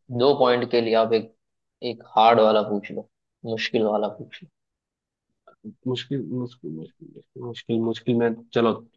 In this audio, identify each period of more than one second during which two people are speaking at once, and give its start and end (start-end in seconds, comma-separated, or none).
none